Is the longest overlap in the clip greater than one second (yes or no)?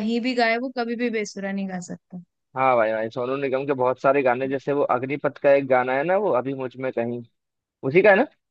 no